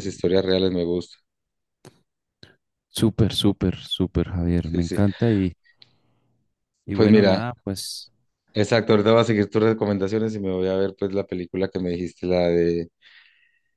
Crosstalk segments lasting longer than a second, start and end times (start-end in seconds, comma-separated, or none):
none